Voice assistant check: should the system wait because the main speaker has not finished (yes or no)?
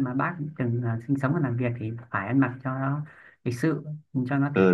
no